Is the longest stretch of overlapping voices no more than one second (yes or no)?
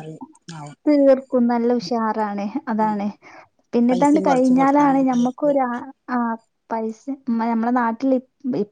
no